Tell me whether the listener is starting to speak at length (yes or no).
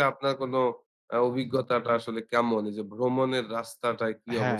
yes